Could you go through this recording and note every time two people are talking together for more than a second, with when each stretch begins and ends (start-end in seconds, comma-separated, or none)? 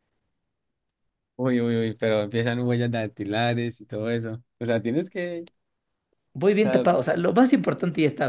none